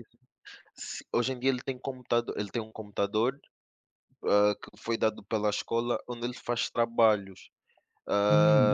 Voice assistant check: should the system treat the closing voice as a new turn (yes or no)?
yes